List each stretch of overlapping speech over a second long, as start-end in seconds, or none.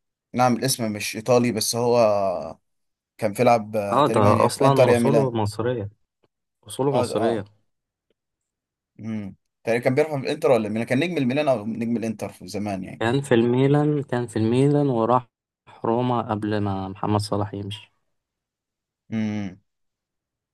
3.9-5.3